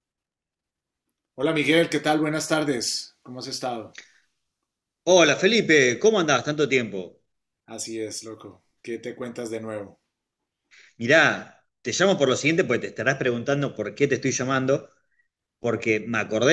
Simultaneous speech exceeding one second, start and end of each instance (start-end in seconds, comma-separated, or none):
none